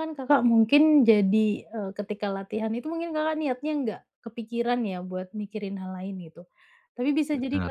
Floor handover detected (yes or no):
no